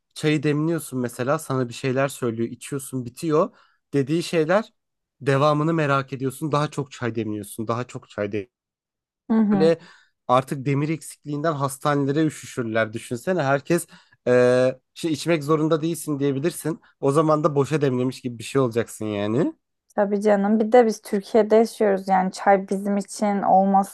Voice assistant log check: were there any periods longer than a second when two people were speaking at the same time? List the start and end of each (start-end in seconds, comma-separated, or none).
none